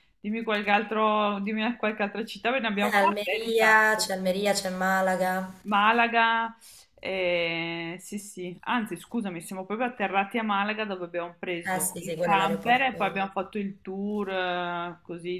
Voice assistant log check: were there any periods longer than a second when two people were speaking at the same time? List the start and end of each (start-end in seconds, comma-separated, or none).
2.8-4.1, 11.6-13.2